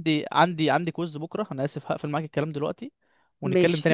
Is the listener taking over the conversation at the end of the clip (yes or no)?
no